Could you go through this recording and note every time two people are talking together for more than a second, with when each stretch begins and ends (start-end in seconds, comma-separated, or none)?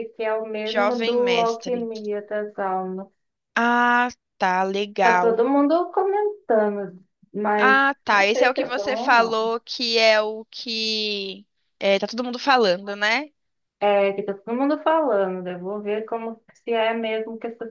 0.6-1.9, 7.6-9.6